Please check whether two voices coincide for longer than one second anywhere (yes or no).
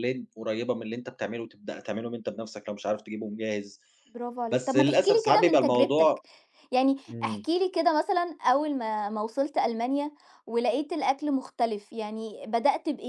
yes